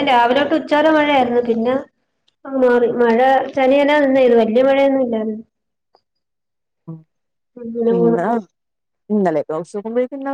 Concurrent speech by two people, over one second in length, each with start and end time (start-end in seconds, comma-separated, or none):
none